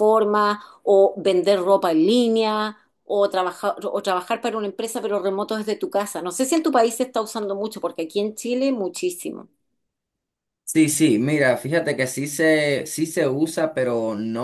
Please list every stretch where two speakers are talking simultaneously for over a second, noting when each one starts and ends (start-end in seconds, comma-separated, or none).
none